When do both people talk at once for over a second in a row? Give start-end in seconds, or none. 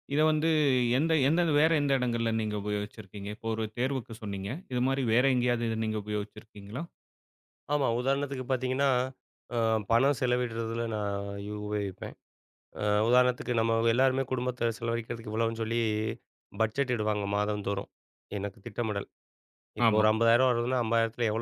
none